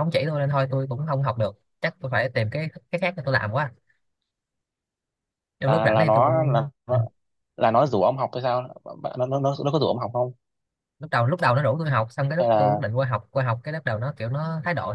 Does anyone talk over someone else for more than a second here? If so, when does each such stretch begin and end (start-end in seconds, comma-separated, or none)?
5.7-7.0